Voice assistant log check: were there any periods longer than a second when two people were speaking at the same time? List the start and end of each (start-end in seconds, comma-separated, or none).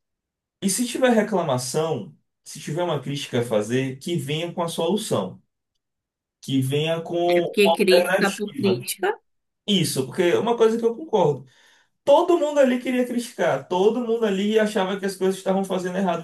7.6-8.8